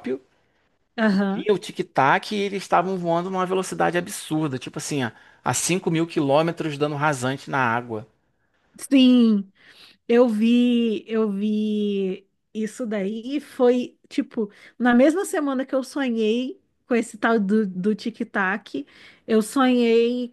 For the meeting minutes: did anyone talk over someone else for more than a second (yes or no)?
no